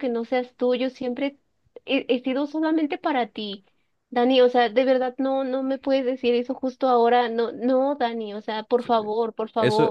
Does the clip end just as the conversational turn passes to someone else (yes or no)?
yes